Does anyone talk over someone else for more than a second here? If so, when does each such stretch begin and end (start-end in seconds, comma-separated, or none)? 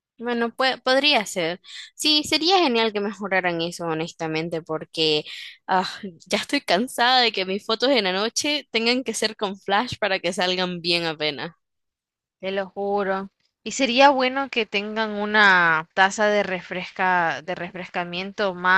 none